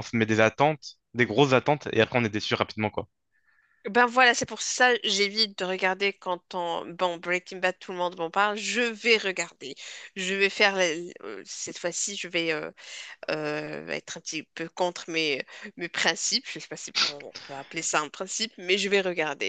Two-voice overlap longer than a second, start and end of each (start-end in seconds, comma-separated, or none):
none